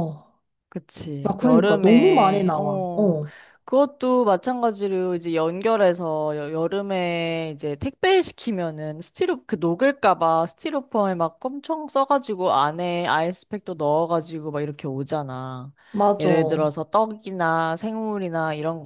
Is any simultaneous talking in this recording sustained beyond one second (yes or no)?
yes